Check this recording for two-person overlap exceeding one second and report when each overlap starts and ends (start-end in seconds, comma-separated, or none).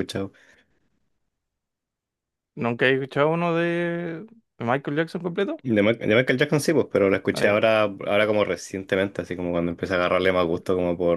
none